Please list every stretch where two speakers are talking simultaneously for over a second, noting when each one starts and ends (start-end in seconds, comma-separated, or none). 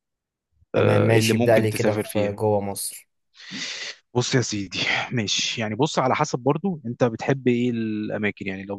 0.8-2.4